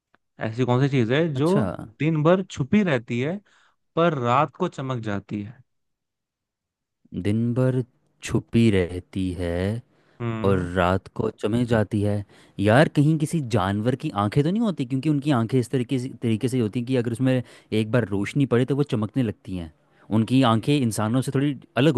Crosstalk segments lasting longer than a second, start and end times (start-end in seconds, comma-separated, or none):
none